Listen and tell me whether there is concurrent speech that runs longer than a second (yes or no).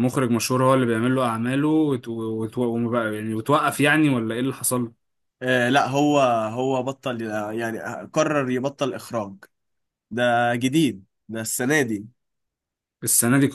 no